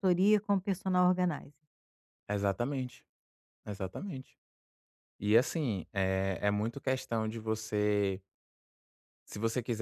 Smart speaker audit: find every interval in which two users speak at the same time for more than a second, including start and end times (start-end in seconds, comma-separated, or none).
none